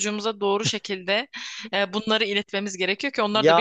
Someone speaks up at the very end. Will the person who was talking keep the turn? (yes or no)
no